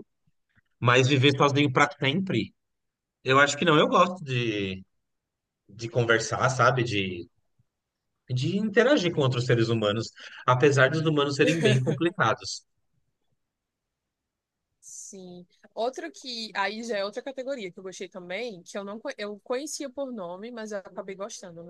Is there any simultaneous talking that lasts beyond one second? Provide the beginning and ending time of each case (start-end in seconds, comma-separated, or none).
none